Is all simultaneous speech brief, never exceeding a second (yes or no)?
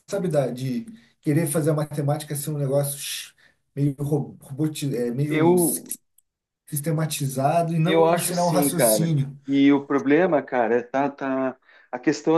no